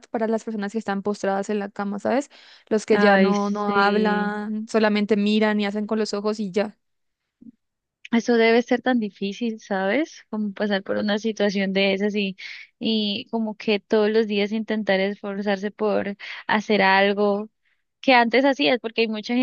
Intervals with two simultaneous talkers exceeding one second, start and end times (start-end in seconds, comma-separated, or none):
2.9-4.3